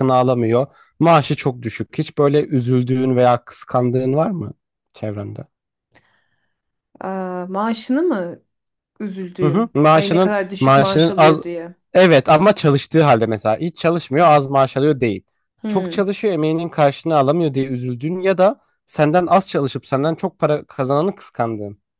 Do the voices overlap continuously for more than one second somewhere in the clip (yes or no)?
yes